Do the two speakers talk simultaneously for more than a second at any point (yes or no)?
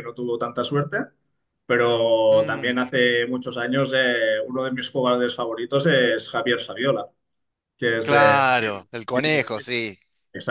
yes